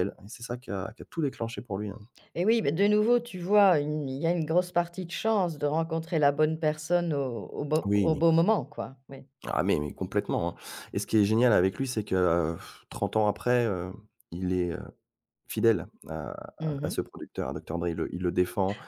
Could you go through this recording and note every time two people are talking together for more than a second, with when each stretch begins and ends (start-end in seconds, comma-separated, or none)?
none